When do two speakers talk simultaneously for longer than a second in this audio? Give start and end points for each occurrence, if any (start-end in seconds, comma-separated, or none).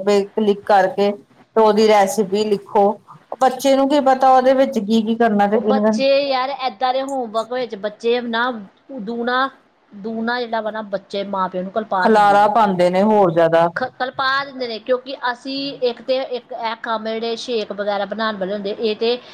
none